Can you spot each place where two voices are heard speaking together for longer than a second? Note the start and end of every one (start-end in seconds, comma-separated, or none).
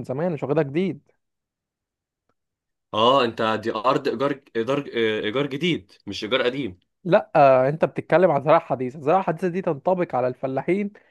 none